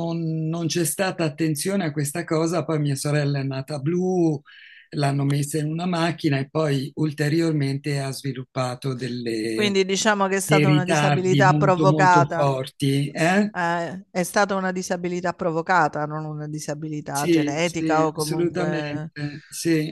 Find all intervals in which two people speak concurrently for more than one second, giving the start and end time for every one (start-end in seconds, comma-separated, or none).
10.4-12.5, 17.1-19.1